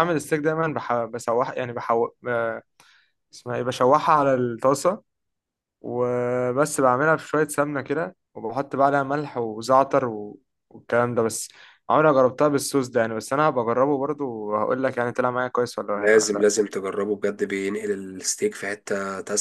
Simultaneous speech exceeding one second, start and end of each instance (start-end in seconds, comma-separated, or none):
none